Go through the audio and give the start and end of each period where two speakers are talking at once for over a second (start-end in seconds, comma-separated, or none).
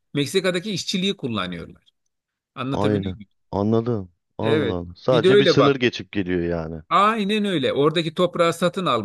4.4-5.7